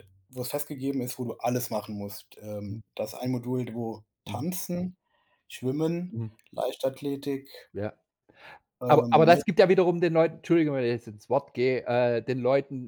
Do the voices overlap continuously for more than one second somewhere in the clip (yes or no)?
no